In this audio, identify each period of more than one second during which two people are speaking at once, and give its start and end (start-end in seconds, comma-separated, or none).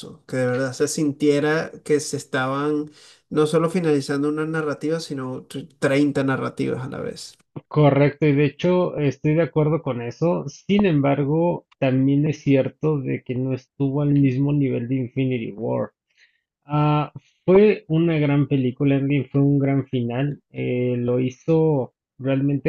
none